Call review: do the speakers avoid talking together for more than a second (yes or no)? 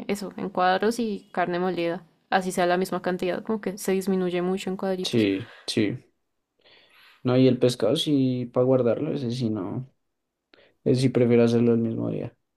yes